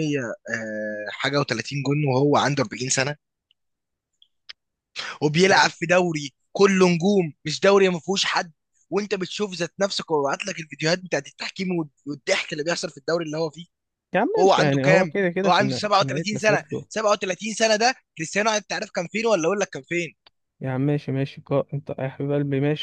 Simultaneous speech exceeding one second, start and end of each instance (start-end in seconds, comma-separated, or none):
14.3-16.9